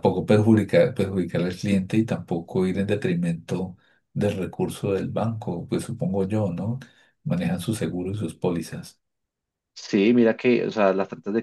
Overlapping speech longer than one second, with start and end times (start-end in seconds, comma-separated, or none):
none